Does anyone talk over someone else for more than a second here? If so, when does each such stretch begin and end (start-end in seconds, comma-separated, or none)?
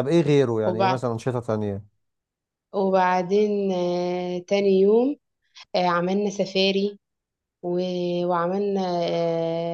none